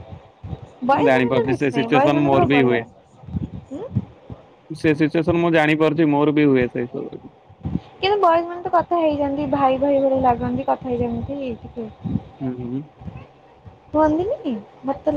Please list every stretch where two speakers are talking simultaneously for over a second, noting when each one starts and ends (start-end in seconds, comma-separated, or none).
1.0-2.8